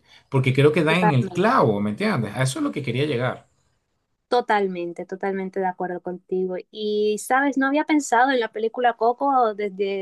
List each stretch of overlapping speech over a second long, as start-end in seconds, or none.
none